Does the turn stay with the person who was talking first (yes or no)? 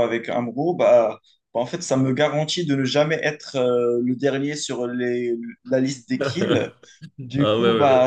yes